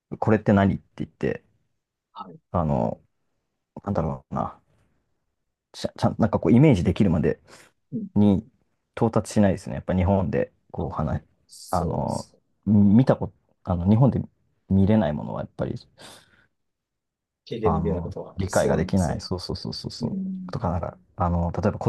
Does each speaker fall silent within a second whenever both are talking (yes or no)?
no